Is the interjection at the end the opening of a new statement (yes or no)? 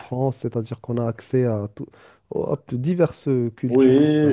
yes